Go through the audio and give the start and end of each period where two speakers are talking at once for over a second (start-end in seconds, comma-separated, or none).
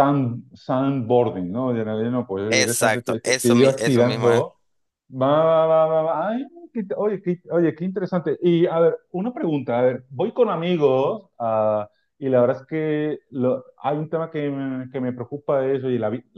2.5-4.5